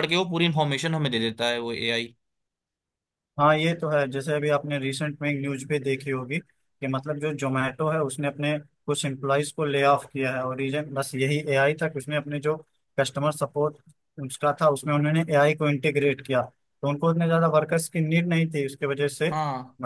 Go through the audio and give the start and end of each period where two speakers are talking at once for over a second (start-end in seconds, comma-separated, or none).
none